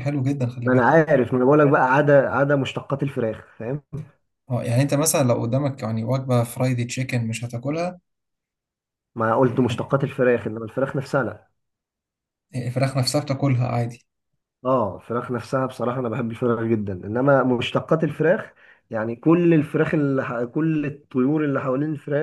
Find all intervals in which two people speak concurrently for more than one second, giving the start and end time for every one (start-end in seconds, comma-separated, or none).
none